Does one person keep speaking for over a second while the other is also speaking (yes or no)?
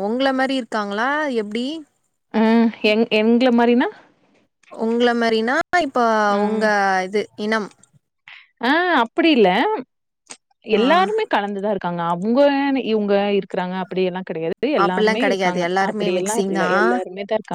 yes